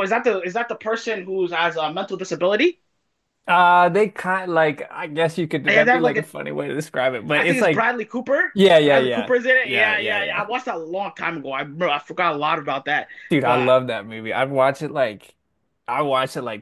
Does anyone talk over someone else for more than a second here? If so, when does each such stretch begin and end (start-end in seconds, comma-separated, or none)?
8.5-10.4